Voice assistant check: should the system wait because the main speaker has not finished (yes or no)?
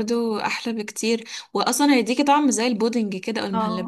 no